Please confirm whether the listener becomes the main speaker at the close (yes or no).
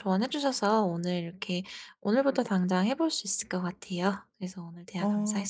yes